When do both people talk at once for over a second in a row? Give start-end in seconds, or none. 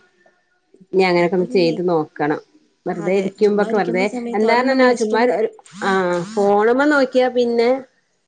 3.0-5.2